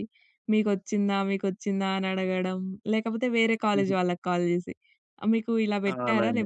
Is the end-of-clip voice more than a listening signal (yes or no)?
no